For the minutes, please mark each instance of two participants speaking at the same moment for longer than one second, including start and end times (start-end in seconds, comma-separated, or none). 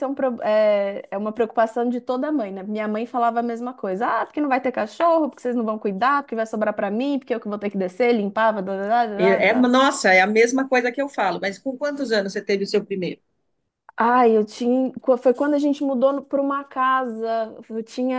none